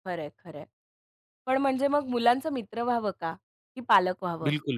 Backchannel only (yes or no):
no